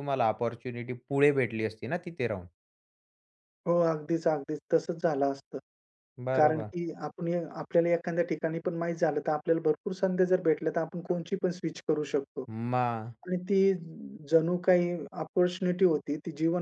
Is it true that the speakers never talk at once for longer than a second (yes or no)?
yes